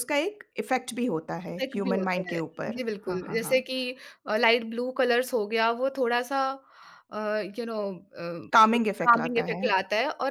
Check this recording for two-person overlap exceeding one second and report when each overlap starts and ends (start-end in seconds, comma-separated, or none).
1.5-3.6